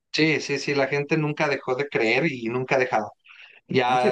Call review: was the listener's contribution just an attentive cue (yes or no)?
no